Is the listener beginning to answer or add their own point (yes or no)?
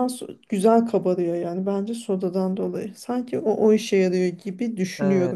yes